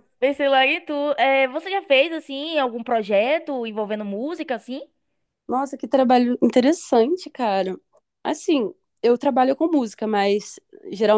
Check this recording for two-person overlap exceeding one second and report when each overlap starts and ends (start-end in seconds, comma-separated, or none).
none